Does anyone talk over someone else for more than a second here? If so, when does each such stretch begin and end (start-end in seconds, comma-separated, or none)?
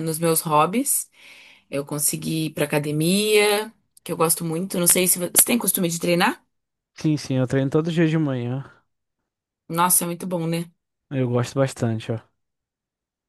none